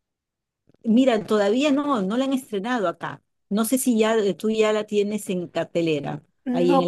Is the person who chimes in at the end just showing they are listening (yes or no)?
no